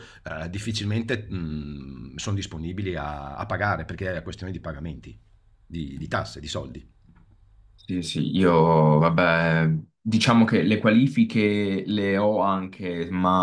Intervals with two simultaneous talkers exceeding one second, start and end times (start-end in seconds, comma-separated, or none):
none